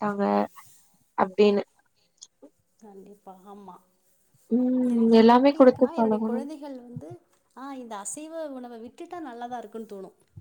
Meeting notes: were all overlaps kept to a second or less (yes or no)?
no